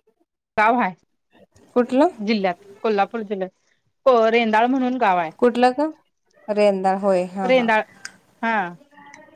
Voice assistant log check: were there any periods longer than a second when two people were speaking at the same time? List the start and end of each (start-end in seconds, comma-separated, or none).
none